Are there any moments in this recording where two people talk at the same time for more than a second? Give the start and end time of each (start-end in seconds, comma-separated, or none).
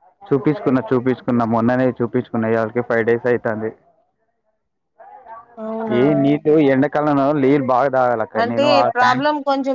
none